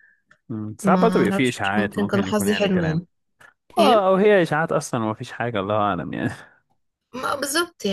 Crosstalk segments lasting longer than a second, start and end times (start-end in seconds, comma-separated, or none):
0.8-3.0